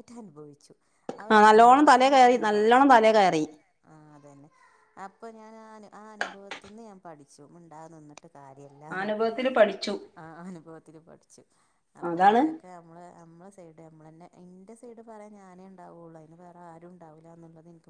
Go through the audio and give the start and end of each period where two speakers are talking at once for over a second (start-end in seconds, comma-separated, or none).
1.3-2.9